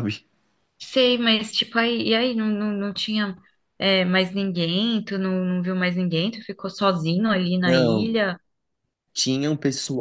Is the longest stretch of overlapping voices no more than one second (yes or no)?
yes